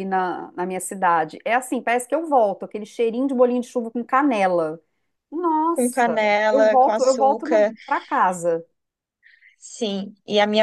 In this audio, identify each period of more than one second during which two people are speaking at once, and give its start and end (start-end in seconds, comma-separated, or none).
5.8-7.5